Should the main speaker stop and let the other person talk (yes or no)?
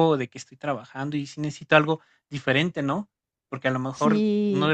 no